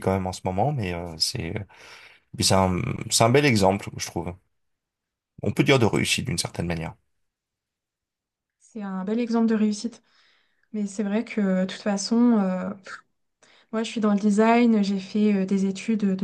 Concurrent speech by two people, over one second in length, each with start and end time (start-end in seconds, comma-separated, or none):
none